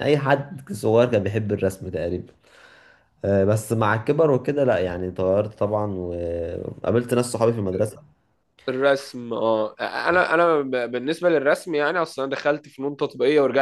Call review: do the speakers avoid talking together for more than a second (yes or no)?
yes